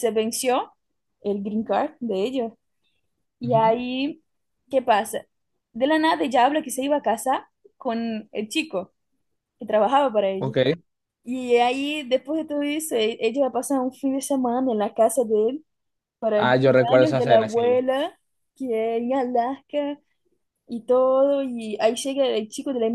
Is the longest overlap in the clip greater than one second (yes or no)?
yes